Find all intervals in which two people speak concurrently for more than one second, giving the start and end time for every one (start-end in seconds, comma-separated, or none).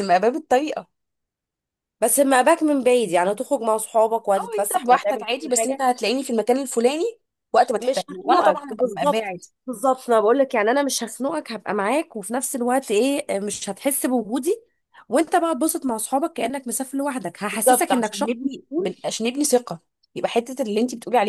4.4-5.9, 7.8-9.5, 17.5-18.9